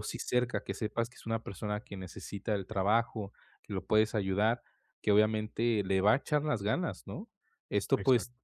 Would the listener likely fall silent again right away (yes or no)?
yes